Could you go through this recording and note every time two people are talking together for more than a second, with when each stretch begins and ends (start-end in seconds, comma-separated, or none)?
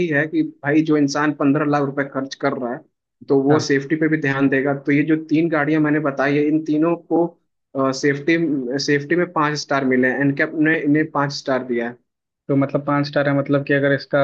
none